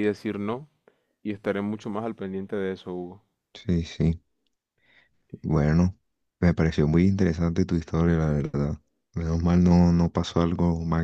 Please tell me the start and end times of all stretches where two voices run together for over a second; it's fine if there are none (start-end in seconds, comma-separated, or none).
none